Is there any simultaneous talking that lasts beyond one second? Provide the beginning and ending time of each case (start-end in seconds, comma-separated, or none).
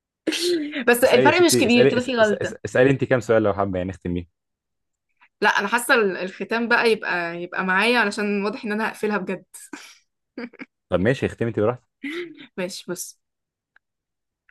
1.0-2.5